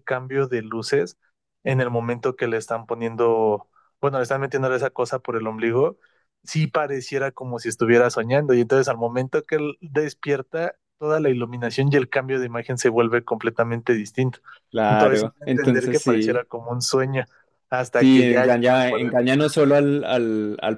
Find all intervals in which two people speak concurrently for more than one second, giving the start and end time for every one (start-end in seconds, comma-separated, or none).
14.9-16.4, 17.9-19.1